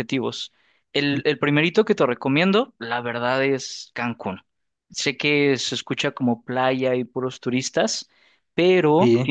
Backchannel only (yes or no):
yes